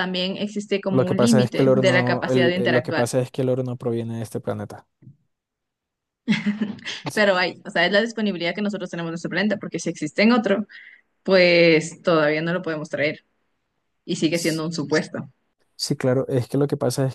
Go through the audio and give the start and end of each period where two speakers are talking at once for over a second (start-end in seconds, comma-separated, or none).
0.9-3.1